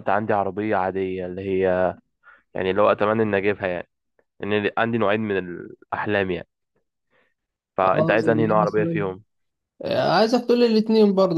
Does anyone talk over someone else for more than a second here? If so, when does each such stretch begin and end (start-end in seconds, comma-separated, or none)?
7.8-9.0